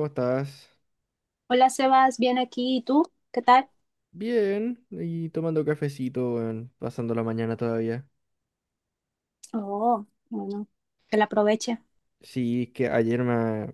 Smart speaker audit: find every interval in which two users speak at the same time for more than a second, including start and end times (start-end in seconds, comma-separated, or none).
none